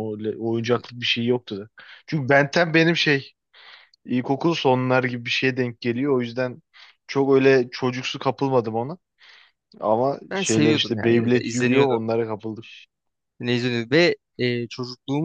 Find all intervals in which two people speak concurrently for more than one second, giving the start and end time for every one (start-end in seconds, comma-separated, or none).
10.3-12.0